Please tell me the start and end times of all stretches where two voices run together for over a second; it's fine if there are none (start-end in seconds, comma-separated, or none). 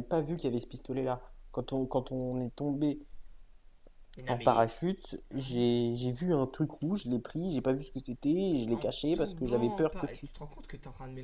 8.7-10.3